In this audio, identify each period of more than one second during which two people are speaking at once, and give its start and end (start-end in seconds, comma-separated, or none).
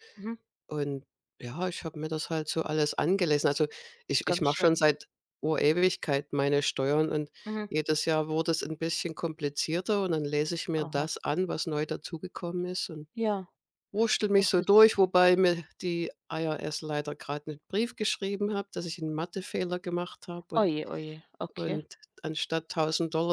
none